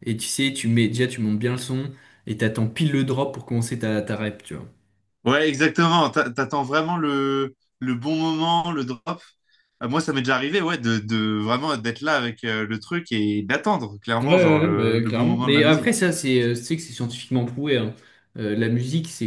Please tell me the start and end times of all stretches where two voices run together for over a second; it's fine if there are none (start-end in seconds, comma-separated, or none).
14.2-16.0